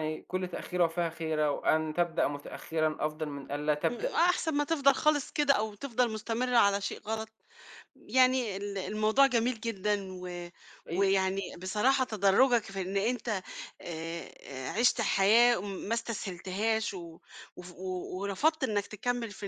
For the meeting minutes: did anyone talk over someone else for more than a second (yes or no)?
no